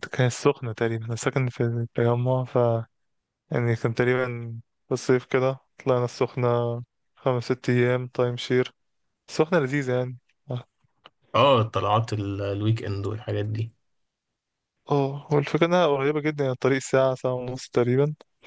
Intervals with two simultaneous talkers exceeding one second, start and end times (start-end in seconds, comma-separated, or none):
none